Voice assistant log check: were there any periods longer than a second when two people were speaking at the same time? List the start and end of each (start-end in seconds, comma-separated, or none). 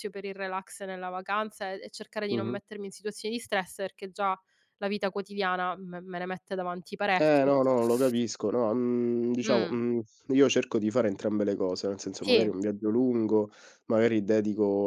none